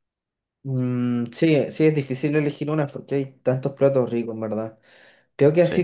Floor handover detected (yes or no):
no